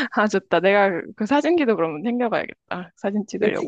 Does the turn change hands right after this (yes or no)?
yes